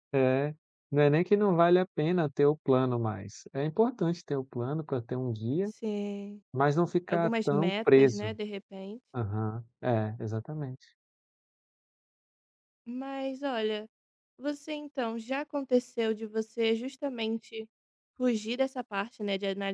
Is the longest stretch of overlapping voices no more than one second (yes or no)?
no